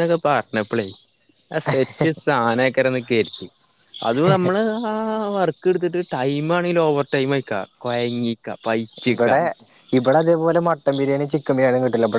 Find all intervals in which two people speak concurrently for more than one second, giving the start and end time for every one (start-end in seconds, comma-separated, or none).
none